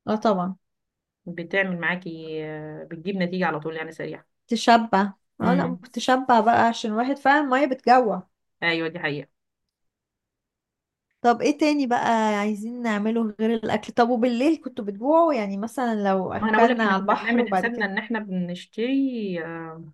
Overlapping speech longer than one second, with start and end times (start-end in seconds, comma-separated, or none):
16.4-17.9